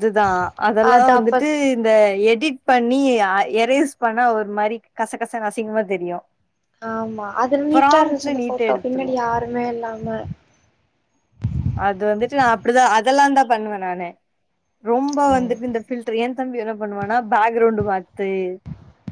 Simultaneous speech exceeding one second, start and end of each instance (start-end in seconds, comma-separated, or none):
7.8-9.1